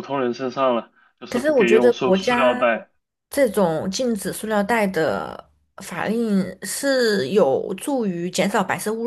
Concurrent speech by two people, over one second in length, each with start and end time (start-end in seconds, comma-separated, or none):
1.3-2.6